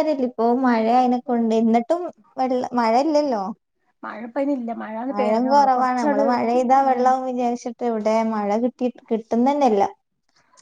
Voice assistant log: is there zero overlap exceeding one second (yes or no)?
no